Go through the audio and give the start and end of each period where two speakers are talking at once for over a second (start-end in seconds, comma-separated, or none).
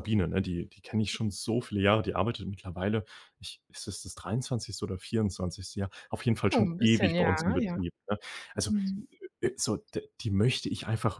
6.5-7.8